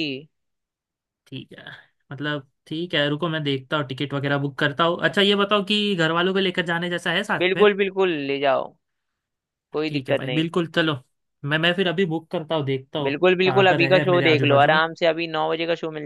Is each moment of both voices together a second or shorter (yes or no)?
no